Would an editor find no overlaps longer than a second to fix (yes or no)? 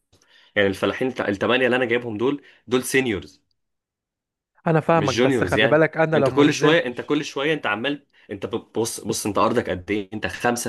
no